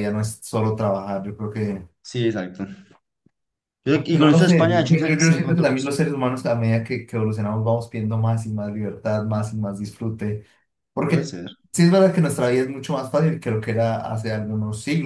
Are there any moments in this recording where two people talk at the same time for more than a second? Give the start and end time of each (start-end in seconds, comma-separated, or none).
3.9-5.7